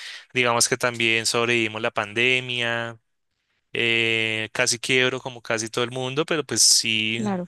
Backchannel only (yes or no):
yes